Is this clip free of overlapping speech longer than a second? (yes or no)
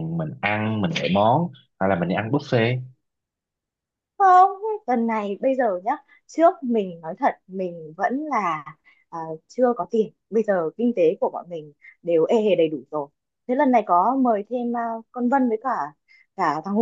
yes